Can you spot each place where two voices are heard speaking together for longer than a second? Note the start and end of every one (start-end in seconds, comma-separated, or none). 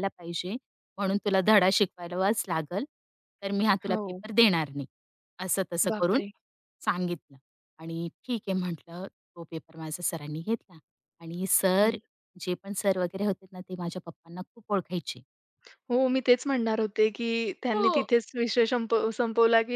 none